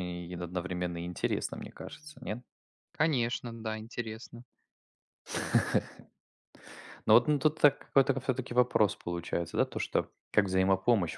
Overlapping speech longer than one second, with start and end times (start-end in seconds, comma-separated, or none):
none